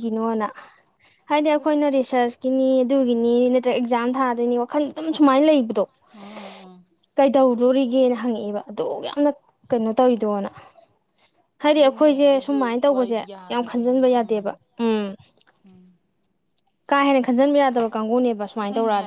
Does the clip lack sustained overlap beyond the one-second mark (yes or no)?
no